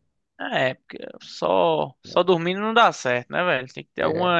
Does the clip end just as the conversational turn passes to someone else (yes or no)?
no